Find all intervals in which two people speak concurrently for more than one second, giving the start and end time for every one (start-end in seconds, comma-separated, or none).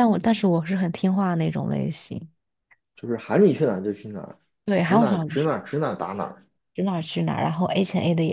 none